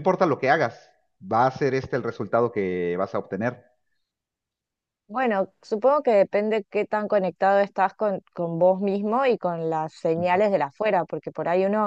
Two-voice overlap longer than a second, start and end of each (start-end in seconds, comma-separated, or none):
none